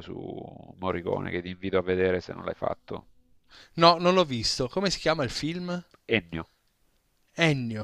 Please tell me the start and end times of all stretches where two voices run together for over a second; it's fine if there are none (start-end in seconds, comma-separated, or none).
none